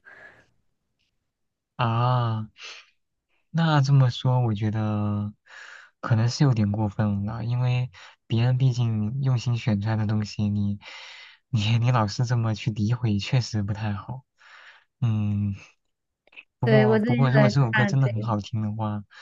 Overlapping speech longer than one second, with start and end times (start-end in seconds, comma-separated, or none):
16.6-18.3